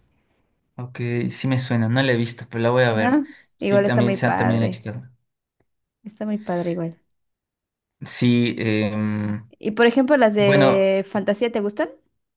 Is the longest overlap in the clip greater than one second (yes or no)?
yes